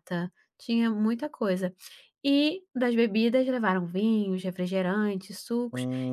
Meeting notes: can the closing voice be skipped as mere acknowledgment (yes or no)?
yes